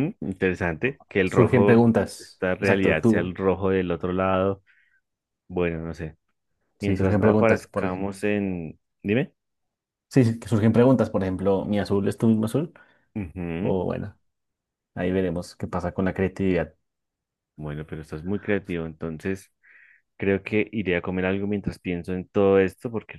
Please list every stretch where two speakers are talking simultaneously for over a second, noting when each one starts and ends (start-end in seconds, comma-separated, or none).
1.3-3.4, 6.8-8.1